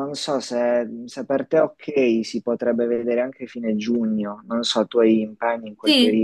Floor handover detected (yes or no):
yes